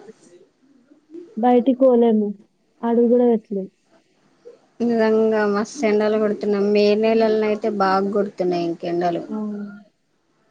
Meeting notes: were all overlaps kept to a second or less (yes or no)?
yes